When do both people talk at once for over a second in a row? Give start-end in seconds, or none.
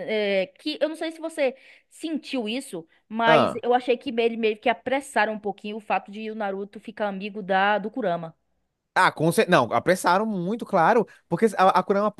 none